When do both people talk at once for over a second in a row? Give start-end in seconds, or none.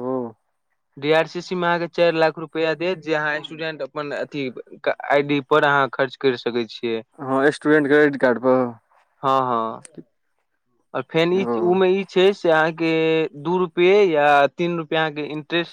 none